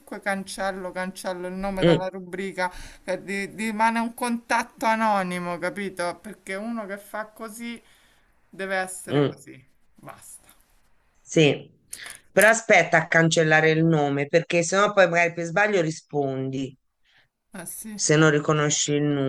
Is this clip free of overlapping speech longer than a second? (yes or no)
yes